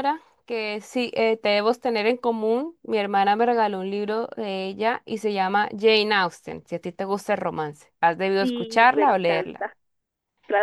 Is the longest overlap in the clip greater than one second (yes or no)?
yes